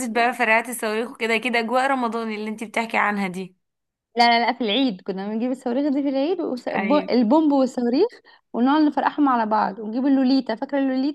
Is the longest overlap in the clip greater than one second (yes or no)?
no